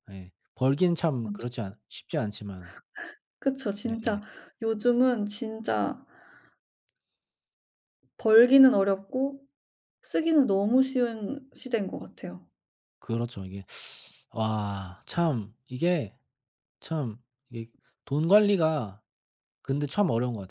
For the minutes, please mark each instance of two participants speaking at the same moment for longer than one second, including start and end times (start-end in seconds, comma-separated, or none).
none